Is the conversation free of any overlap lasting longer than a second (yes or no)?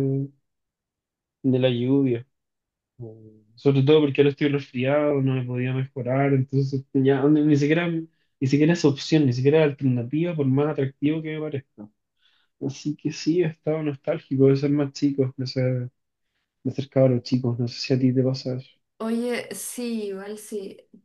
yes